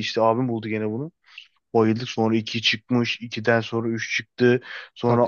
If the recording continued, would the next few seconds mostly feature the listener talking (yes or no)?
no